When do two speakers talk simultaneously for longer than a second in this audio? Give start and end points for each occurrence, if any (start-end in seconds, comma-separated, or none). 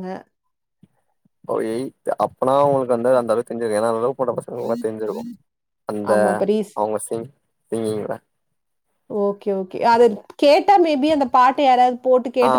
none